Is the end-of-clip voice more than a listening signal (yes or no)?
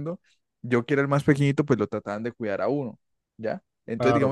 no